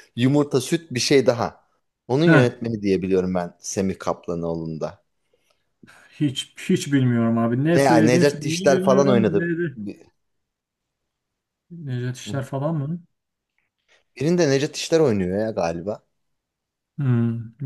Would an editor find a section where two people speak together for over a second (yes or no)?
yes